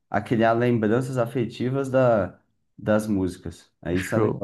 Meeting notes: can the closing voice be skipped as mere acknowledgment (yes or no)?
no